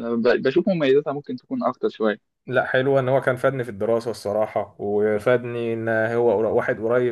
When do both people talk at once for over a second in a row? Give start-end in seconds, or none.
none